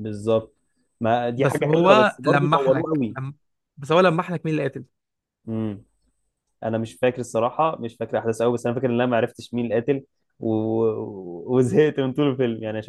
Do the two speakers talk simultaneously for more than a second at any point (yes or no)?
yes